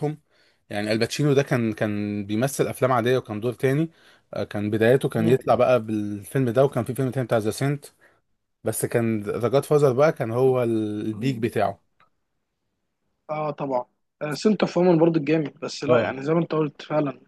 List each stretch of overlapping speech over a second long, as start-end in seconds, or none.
none